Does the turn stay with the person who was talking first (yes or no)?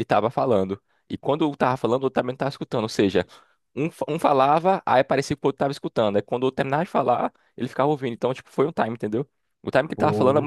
yes